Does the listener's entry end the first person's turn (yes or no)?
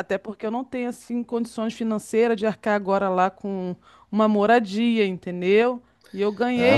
yes